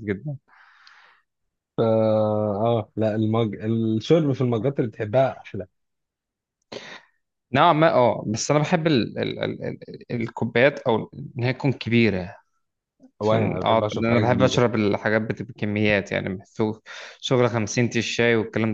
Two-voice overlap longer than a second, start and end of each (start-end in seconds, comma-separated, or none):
13.2-14.6